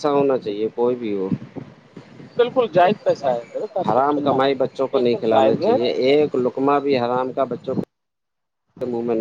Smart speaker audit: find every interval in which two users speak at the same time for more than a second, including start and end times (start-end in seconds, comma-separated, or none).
3.9-5.8